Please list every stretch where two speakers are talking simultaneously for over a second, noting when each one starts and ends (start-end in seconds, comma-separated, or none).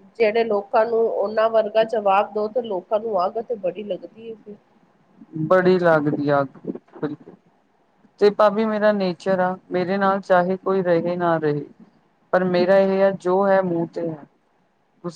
none